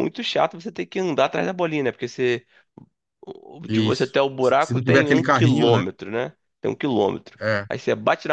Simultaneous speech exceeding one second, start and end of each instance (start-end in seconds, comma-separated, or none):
3.7-5.8